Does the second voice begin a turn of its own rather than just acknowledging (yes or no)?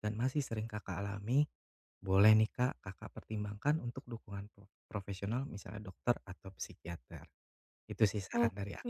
yes